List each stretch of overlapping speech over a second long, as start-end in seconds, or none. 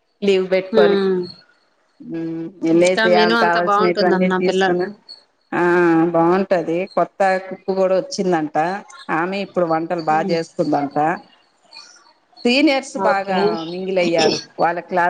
2.8-4.7